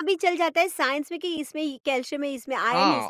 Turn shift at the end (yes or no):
no